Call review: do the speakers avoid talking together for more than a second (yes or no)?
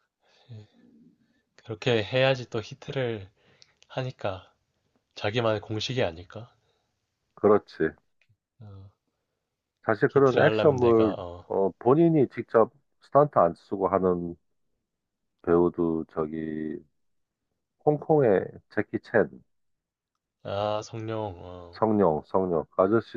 no